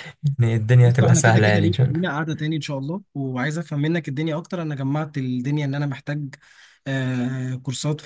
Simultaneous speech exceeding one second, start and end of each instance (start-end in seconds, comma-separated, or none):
0.8-2.0